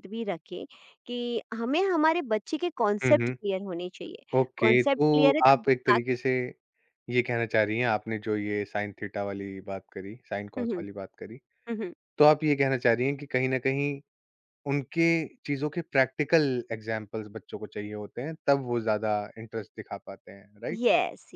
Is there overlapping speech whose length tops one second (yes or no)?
yes